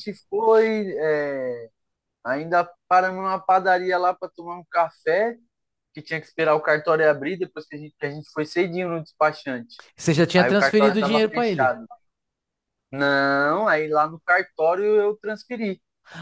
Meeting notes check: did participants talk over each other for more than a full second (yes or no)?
yes